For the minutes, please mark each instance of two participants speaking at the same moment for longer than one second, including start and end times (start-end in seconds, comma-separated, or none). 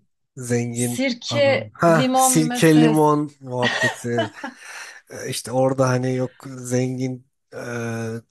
0.7-3.1